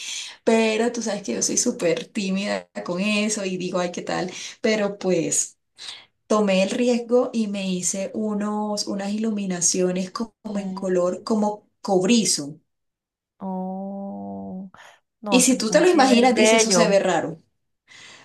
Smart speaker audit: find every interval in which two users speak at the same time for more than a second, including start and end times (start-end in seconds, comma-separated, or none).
15.3-17.0